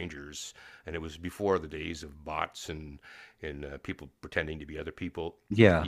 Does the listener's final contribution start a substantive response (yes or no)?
no